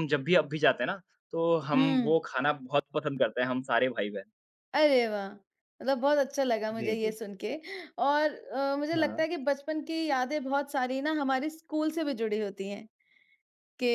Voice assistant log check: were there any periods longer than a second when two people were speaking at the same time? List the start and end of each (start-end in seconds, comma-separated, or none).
none